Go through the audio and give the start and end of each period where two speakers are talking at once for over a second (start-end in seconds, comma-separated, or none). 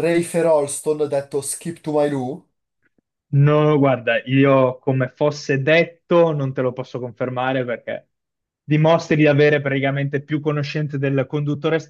none